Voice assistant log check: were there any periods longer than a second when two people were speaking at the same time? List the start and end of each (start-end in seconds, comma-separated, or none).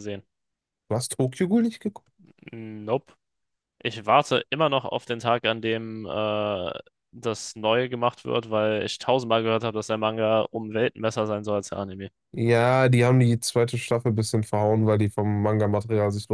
none